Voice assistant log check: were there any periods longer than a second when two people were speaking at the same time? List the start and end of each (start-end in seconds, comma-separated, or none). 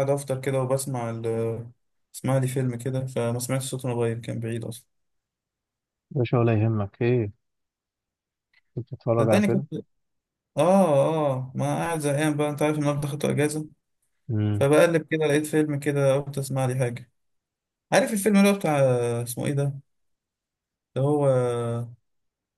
none